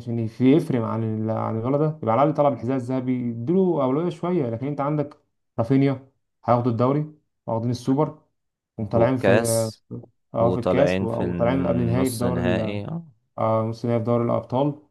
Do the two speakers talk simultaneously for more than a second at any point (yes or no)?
yes